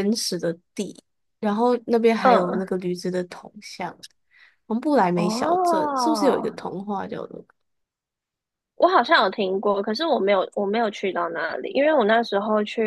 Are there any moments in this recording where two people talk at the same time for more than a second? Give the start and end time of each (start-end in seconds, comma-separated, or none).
5.2-6.5